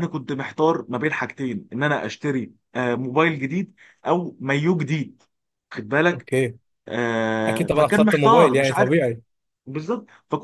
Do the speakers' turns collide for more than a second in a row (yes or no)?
yes